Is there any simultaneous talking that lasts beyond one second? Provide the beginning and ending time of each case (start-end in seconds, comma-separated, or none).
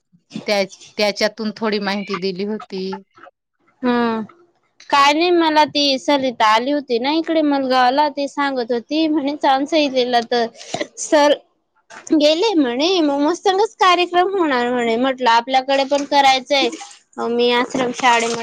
none